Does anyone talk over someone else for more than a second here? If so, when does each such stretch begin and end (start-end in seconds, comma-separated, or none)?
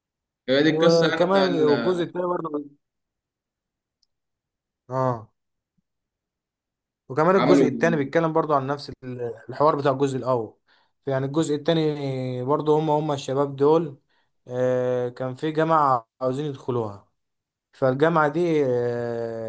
0.7-2.0